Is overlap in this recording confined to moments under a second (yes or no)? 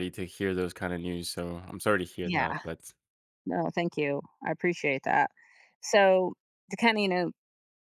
yes